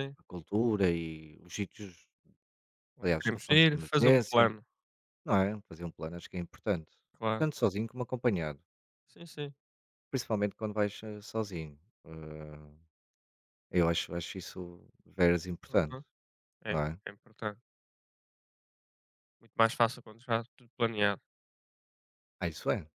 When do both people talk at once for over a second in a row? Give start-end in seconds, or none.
3.0-4.5